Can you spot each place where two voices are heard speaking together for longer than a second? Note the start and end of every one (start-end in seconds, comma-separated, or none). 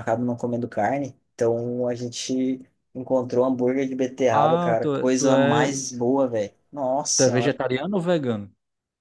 4.3-5.7